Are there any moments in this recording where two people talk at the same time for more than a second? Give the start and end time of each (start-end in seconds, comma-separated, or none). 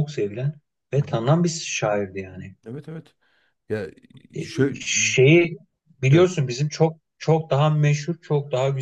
none